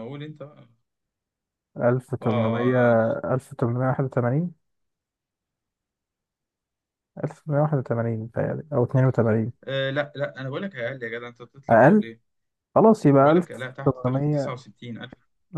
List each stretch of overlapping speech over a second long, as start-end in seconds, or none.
13.2-14.6